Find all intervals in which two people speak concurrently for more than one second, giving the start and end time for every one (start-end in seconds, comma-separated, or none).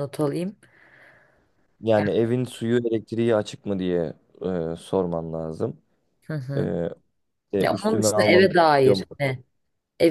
7.6-9.1